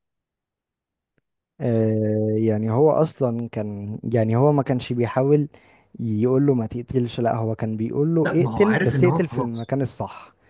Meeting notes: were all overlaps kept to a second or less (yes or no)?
no